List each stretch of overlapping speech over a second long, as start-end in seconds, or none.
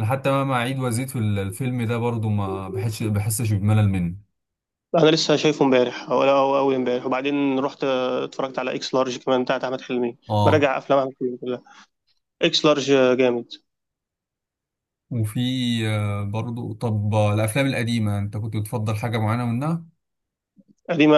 none